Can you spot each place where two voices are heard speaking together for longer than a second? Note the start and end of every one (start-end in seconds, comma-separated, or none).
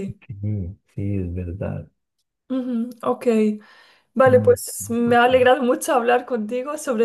4.2-5.5